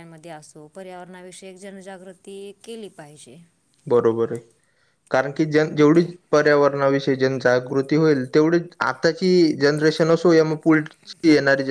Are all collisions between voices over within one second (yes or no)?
yes